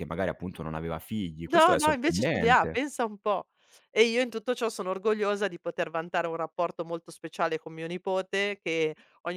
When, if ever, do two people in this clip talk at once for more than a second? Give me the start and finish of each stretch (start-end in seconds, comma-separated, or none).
1.5-2.8